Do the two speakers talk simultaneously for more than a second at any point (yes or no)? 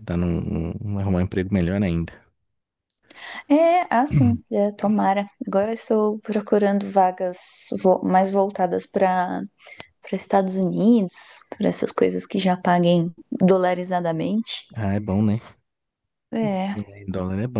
no